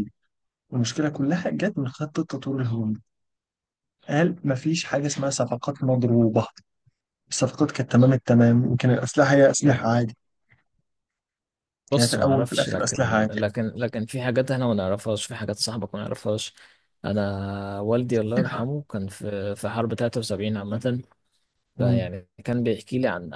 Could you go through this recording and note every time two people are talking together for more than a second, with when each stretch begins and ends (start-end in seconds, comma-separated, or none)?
11.9-13.4